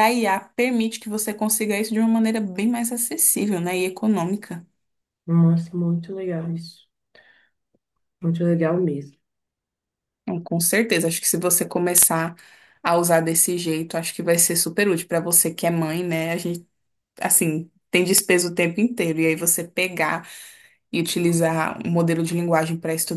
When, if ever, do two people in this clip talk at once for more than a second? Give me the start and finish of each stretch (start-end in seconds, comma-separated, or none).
none